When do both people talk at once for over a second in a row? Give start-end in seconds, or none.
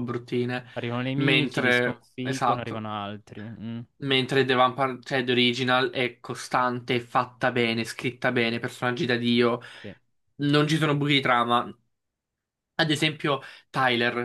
1.1-2.9